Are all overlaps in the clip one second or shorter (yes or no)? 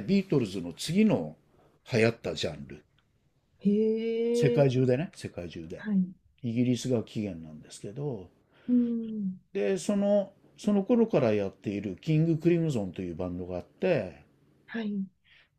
yes